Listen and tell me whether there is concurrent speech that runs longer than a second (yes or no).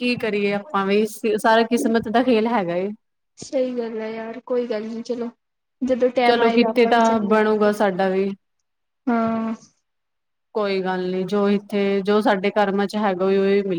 yes